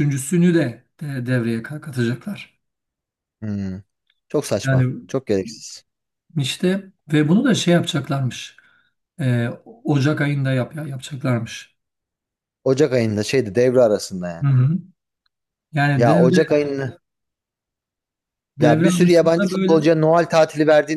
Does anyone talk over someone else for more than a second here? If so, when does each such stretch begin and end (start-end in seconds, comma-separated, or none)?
18.6-19.9